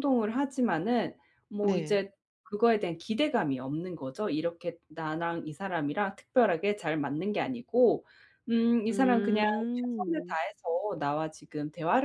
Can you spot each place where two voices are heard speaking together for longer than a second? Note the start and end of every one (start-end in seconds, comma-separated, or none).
8.9-10.4